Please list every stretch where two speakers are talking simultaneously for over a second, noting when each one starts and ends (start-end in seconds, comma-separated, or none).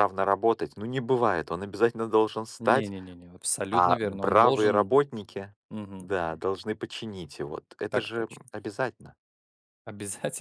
3.7-5.0